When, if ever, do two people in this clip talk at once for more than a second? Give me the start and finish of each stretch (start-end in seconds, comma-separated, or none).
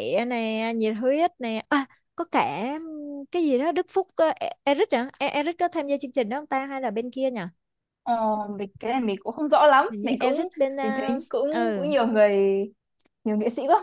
9.9-11.9